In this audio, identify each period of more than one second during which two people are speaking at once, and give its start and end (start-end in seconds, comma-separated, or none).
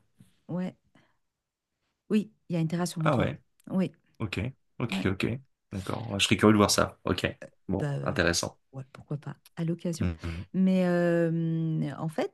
none